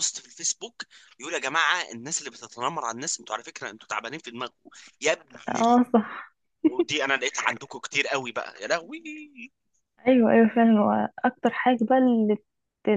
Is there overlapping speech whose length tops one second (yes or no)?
no